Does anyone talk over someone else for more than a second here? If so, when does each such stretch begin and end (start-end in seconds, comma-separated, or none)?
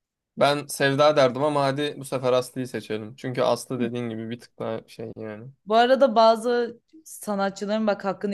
none